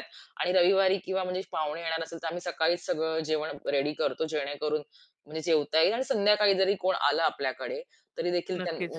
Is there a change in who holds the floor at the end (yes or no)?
no